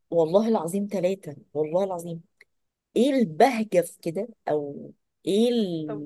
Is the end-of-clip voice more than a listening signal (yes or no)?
no